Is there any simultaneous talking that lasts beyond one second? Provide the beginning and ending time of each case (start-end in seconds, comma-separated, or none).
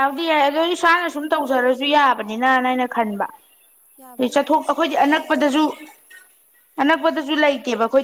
4.2-5.6